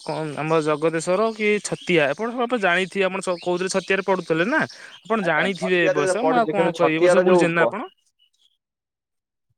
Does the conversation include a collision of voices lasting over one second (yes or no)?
yes